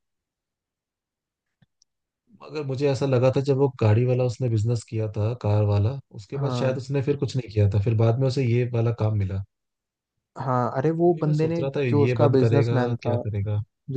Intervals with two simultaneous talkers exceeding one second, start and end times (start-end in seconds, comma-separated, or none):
11.0-13.1